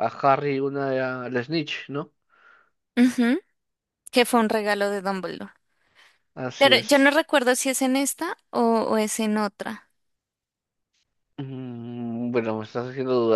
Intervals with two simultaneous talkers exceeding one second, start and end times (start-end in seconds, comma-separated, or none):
none